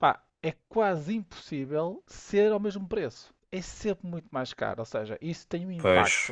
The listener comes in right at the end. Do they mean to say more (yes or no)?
no